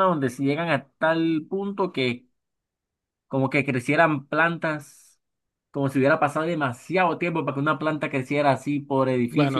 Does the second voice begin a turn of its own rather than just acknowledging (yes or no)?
yes